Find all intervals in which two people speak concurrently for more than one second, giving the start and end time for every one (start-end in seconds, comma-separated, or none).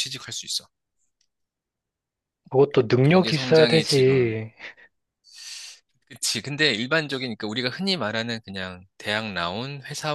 3.0-4.4